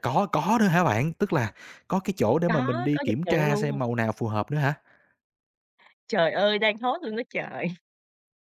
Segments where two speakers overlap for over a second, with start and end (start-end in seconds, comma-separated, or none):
2.5-3.8